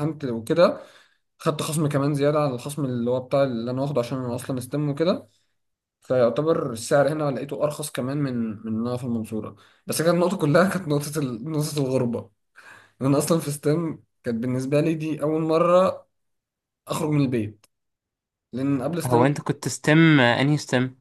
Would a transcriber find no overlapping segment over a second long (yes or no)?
yes